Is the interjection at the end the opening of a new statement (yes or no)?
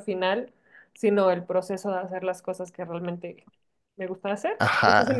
yes